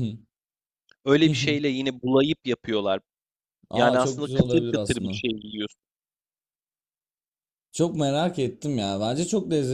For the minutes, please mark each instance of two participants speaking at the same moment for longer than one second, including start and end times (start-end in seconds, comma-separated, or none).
3.7-5.2